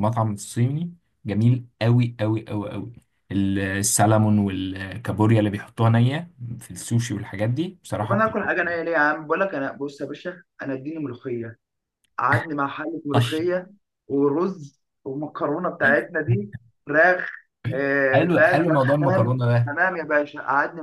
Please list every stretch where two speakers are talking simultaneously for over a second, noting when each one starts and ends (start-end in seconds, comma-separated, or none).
18.1-19.7